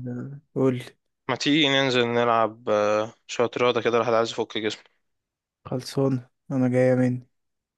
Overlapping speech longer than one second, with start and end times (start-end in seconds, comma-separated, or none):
none